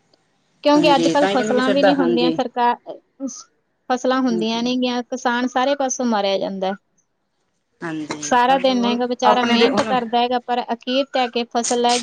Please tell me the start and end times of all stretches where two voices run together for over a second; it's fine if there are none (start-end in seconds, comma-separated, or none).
0.8-2.3, 8.2-9.9